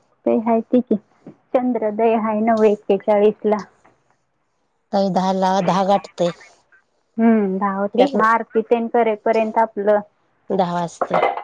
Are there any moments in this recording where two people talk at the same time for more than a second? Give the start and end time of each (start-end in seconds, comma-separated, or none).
none